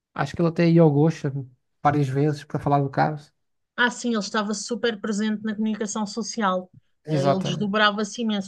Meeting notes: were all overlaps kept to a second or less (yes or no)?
yes